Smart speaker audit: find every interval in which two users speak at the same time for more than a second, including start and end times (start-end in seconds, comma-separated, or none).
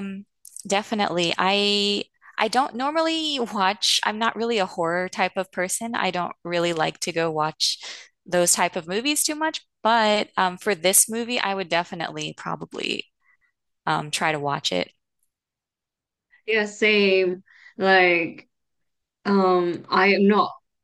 none